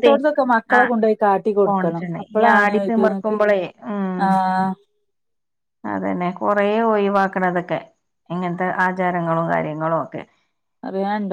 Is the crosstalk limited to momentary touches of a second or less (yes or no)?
no